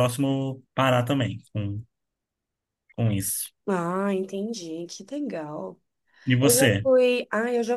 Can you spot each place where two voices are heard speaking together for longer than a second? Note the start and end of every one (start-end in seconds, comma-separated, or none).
none